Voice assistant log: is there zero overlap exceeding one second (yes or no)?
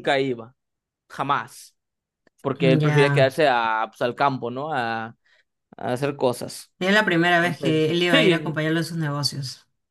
no